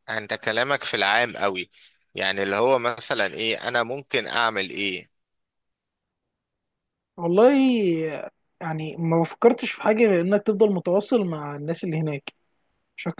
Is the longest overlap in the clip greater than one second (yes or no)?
no